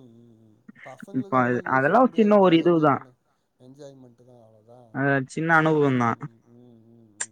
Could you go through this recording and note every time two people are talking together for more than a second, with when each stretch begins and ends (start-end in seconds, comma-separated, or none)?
1.2-2.9